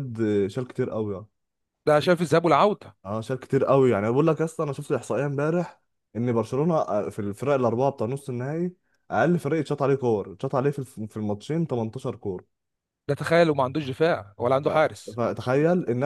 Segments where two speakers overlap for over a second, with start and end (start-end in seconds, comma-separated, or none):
none